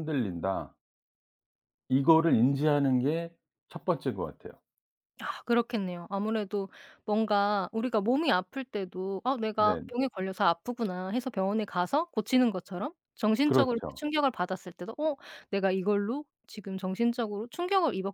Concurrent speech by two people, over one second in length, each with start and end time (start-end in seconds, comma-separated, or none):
none